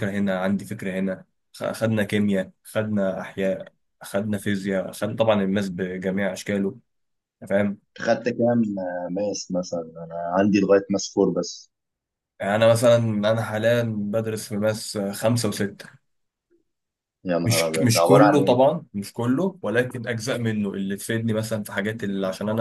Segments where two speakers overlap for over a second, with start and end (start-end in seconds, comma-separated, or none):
17.4-18.6